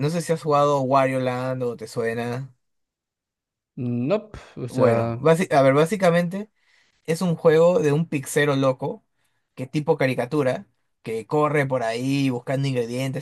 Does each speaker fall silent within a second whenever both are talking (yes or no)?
yes